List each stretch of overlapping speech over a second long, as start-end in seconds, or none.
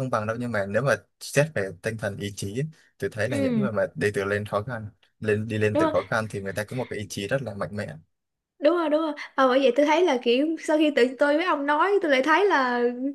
none